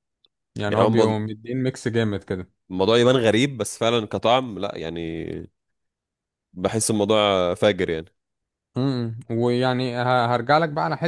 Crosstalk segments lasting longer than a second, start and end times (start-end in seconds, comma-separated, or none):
none